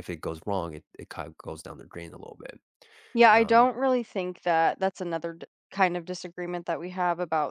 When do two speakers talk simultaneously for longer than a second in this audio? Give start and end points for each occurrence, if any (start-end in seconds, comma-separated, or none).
none